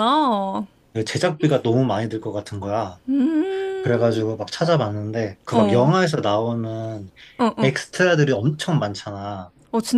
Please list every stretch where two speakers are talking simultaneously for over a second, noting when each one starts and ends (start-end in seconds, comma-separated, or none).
none